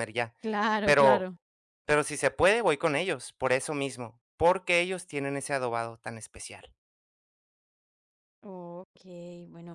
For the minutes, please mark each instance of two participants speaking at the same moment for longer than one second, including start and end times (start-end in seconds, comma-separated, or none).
none